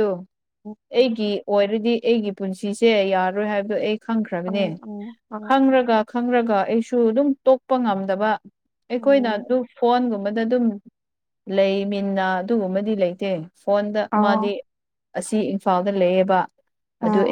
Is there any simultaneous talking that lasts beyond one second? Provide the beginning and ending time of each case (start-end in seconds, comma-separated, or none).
none